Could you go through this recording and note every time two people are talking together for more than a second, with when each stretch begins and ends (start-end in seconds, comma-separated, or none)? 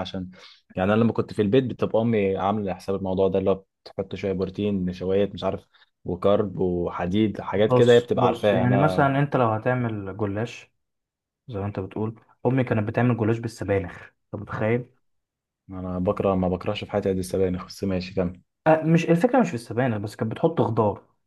7.5-9.1